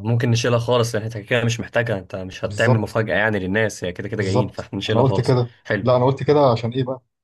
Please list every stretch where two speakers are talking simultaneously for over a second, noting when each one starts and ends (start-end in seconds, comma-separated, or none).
4.2-5.9